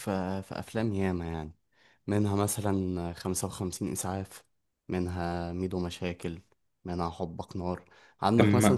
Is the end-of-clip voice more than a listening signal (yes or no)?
no